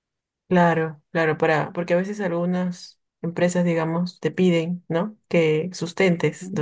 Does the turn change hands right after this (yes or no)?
no